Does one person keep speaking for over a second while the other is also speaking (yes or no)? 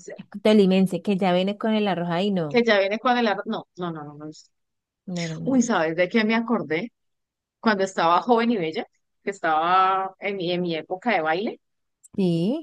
no